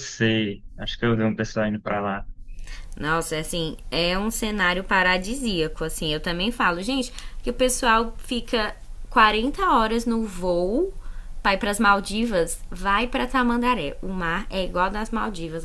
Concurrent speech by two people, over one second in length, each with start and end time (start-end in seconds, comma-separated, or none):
none